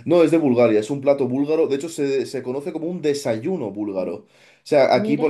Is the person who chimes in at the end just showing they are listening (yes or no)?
yes